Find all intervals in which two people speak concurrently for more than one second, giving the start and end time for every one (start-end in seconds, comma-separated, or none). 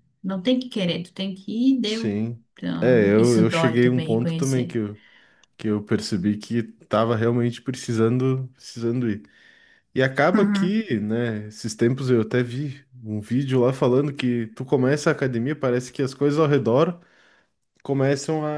2.8-4.8